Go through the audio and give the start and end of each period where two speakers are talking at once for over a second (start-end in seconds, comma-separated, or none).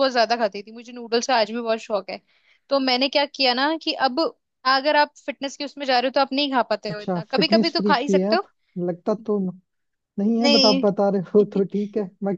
6.9-8.4